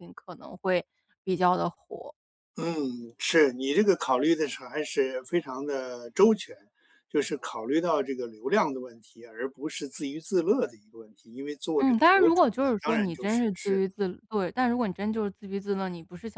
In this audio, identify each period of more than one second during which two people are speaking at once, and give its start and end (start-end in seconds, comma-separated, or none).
11.8-13.8